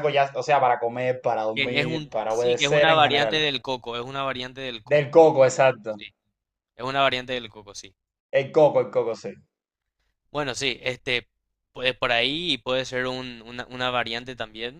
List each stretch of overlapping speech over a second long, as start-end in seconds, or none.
1.5-3.4